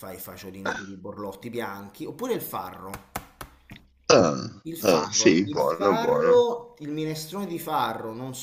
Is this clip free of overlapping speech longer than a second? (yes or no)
no